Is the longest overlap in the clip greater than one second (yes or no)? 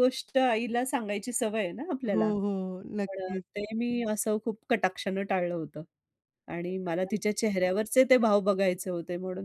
no